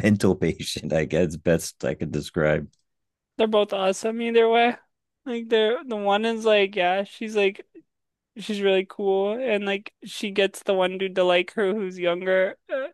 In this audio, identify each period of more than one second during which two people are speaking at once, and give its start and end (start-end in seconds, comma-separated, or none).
none